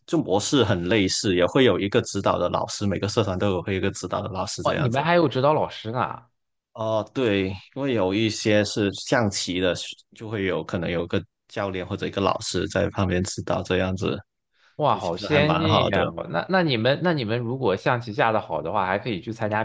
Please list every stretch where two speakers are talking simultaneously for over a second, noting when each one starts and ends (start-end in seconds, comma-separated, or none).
14.8-16.1